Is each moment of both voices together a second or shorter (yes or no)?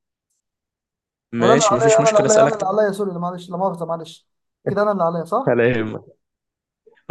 no